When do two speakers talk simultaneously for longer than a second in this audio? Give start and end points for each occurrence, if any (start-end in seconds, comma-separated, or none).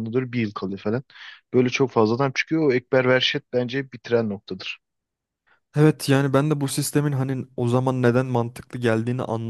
none